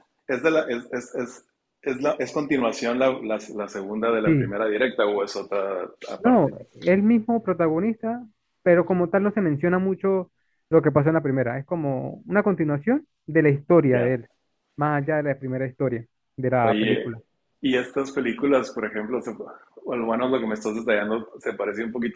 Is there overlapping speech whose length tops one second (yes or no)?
no